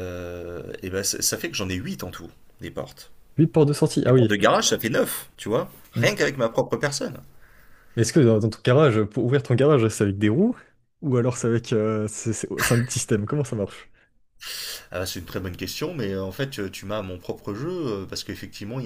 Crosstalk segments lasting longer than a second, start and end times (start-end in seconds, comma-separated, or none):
none